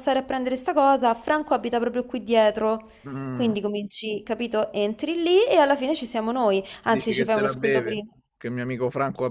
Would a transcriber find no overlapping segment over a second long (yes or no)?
no